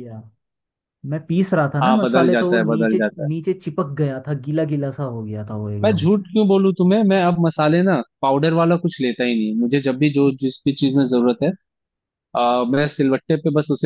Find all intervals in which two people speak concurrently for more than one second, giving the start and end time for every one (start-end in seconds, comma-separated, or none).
1.8-3.3